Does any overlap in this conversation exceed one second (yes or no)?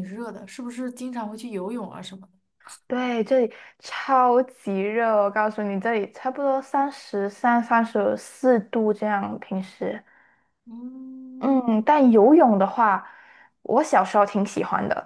no